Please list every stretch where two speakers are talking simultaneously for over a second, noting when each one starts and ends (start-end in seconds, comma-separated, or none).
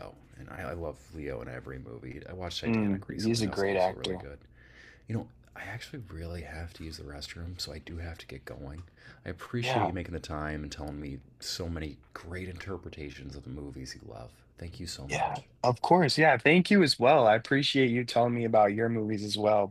2.6-4.2